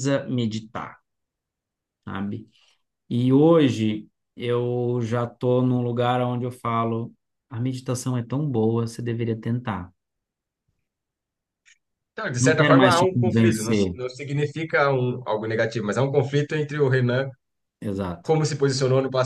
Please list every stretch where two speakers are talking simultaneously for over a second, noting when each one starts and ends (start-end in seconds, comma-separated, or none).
12.4-13.9